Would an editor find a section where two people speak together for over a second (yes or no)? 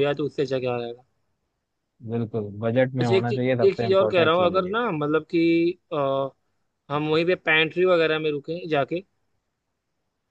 yes